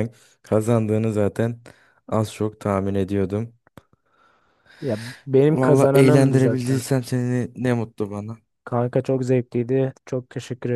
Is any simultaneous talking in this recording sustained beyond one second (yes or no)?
yes